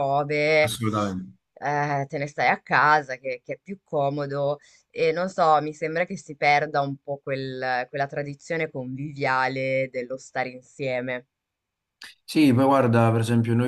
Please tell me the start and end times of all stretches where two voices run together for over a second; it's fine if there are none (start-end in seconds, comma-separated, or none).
none